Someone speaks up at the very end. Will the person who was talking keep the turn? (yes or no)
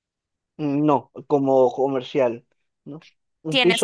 no